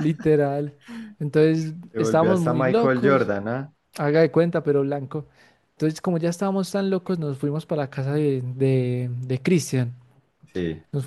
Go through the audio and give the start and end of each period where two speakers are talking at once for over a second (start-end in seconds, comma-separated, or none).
1.9-3.3